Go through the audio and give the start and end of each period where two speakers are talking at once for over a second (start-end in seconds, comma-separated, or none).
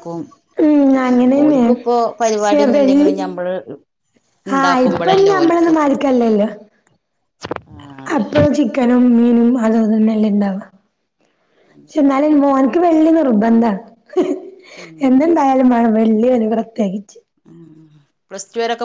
1.4-3.1